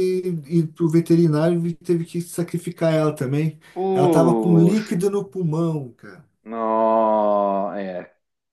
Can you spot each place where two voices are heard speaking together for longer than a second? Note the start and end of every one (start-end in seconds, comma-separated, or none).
3.7-5.0